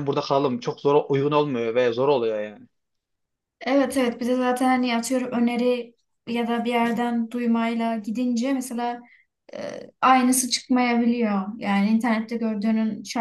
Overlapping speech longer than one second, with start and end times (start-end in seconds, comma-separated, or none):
none